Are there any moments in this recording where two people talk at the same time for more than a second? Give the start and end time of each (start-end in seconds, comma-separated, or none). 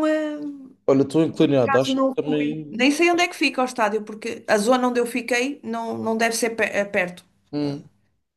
1.4-2.9